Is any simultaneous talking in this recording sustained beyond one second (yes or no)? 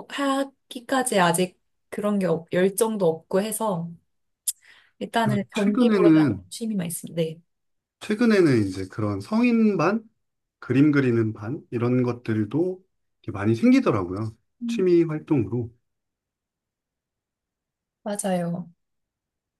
yes